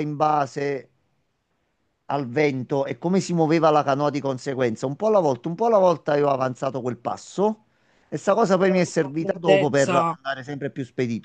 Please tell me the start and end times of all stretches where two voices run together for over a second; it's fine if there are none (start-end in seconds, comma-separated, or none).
8.6-10.2